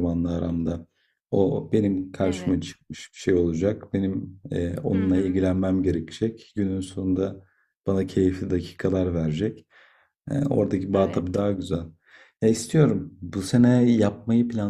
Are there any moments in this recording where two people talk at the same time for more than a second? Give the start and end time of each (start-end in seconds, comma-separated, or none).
none